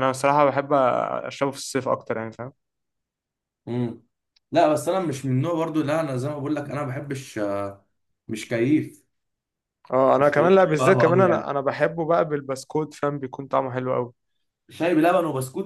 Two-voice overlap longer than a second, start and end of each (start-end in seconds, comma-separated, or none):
10.2-11.5